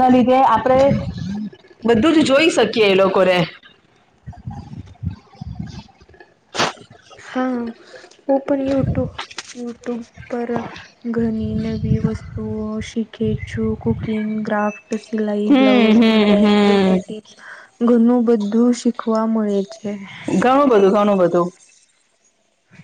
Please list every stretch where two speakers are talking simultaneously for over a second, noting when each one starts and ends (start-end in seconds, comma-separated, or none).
15.5-16.9